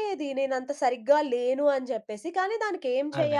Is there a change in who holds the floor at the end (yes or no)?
no